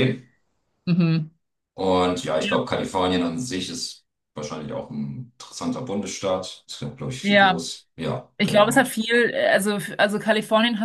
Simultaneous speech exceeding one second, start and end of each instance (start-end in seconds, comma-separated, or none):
none